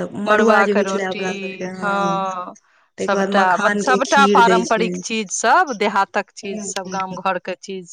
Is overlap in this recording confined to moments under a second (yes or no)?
no